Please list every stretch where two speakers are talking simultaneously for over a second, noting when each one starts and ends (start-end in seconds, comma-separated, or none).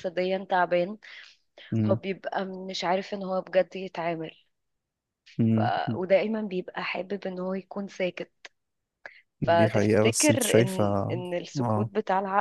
9.4-10.8